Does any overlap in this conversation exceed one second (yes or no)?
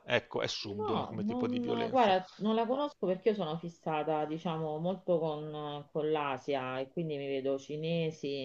yes